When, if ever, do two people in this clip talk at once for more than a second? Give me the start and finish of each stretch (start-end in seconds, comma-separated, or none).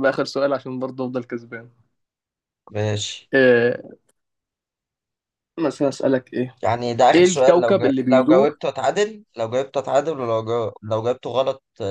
7.2-8.6